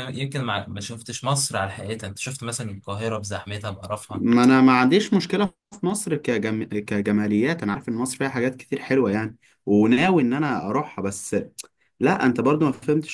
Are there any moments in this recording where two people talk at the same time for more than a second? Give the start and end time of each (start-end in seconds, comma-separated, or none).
none